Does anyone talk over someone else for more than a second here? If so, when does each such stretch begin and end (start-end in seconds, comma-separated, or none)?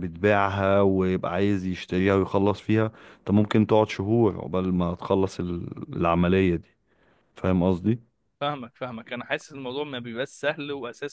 none